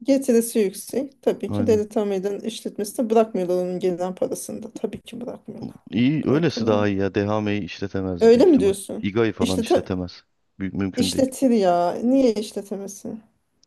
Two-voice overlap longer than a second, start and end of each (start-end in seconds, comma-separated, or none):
8.2-9.9